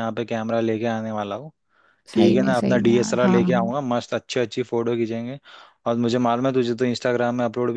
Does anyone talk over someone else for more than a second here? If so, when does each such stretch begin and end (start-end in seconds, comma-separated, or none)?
2.1-3.7